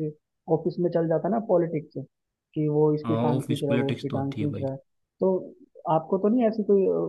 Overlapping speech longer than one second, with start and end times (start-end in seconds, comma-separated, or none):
3.0-4.6